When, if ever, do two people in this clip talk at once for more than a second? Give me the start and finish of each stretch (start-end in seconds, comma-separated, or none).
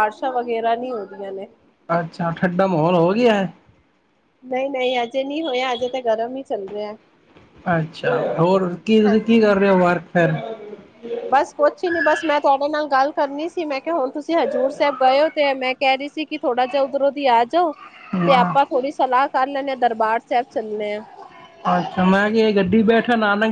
none